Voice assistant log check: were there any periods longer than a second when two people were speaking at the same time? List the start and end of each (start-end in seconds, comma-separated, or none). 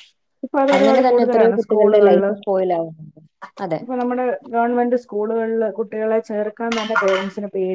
0.8-2.2